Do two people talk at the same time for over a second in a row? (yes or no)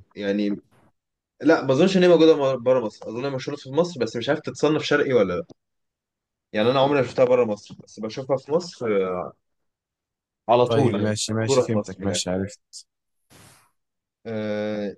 yes